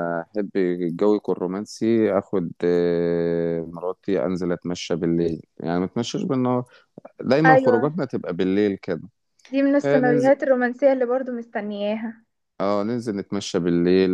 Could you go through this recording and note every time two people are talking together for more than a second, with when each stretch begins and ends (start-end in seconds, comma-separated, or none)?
none